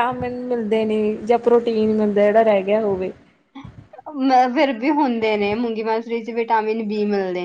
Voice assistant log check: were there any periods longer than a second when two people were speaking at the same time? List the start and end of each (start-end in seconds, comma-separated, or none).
none